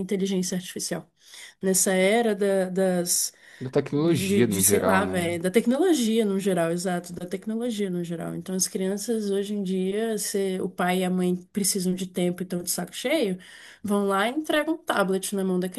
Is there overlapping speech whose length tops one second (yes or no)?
yes